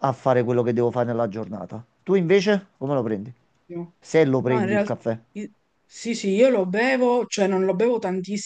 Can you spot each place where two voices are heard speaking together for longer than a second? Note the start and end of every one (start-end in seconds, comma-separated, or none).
none